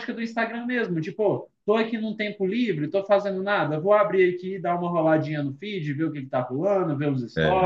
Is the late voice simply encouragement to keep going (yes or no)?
yes